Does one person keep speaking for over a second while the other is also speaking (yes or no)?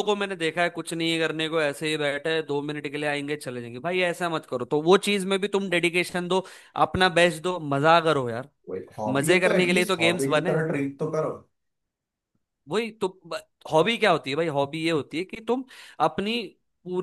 yes